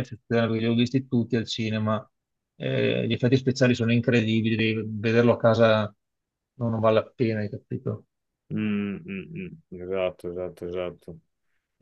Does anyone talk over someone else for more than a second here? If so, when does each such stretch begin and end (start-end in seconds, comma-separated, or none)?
none